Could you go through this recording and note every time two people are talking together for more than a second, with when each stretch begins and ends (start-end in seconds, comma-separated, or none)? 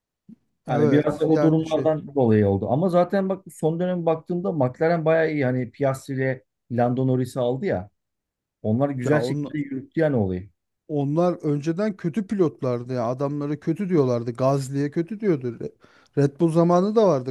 0.7-1.9